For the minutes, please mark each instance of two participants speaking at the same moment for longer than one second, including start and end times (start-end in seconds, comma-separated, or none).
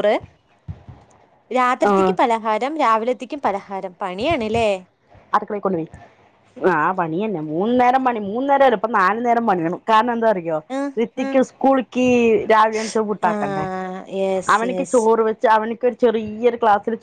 none